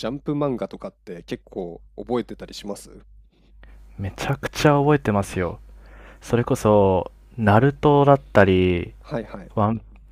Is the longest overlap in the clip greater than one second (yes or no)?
no